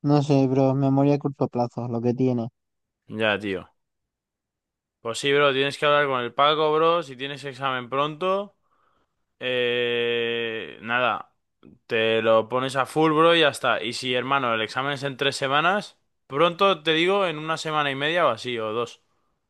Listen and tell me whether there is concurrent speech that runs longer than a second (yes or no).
no